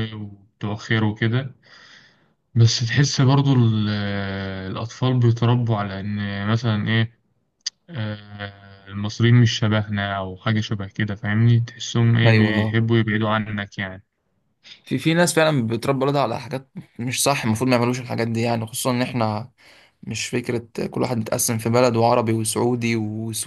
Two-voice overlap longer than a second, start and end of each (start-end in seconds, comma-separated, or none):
none